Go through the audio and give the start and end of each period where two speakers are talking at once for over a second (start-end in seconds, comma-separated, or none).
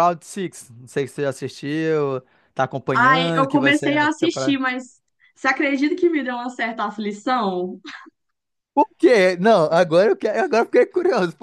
2.9-4.6